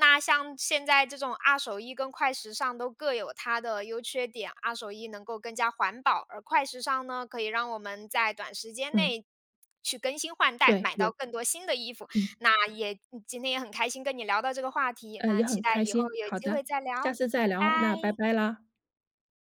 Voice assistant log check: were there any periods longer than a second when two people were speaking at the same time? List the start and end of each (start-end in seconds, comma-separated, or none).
15.2-18.3